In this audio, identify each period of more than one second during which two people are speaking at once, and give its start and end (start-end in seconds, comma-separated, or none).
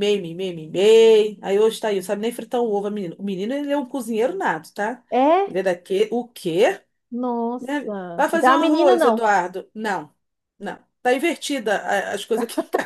7.6-9.3